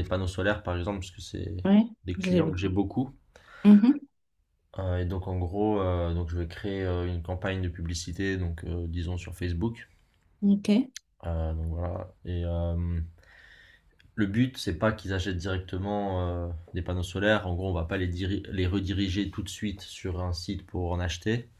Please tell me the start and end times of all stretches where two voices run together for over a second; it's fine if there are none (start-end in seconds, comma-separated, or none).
none